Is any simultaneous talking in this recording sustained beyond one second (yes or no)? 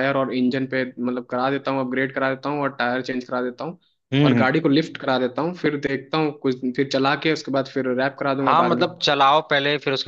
no